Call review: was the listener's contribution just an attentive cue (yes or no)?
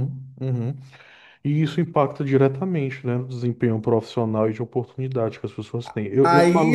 no